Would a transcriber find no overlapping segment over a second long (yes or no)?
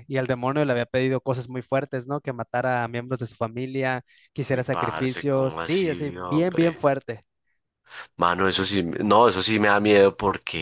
no